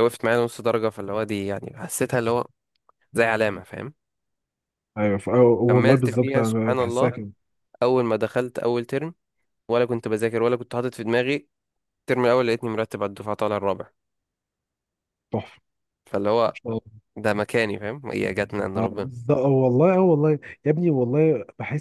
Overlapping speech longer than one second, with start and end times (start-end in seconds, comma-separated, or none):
5.7-7.1